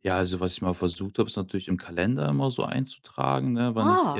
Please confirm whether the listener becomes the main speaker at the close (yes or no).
no